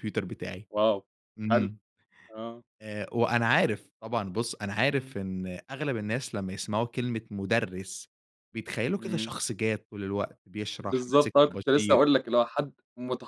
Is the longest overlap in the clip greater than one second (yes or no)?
yes